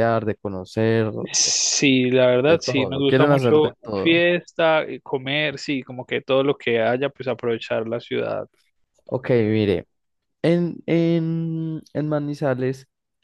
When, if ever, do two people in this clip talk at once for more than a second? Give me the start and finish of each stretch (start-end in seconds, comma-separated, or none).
2.4-4.2